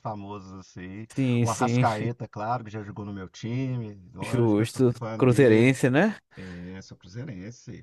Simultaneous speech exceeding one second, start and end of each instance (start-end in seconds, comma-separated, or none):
4.2-5.7